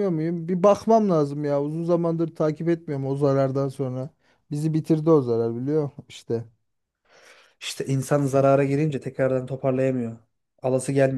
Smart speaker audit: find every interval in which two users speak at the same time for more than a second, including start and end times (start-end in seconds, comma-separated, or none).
none